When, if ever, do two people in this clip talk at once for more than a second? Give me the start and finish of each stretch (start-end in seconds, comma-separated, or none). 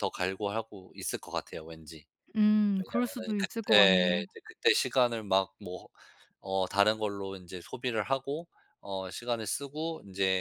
2.8-4.2